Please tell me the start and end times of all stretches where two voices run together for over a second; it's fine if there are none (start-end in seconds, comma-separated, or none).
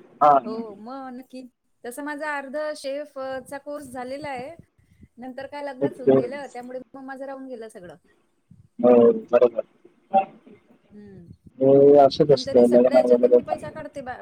11.6-13.6